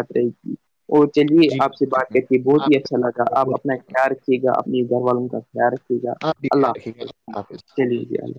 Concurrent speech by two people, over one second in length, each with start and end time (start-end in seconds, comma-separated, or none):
1.5-3.9